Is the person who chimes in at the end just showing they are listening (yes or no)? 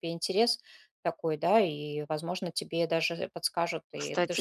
no